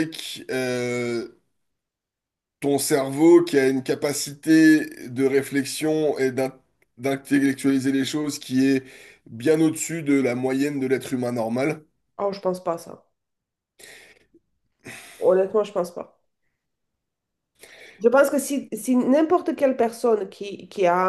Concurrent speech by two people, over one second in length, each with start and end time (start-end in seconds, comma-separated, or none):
none